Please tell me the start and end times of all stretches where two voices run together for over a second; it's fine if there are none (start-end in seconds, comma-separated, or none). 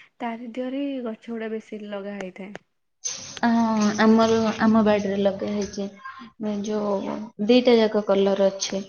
none